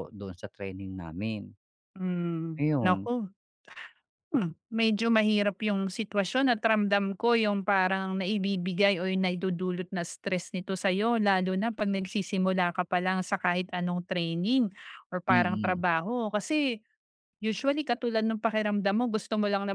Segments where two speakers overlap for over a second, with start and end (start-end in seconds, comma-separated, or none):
none